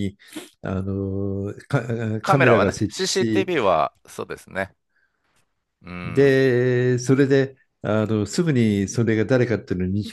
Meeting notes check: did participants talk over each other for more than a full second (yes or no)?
yes